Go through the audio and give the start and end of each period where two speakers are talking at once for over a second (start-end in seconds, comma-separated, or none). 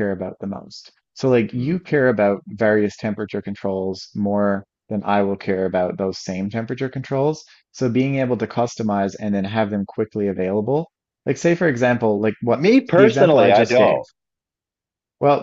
12.5-14.0